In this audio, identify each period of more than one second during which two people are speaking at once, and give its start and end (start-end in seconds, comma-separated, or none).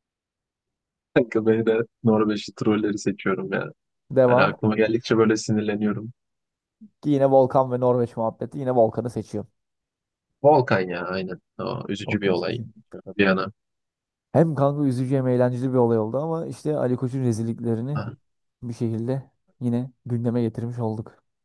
none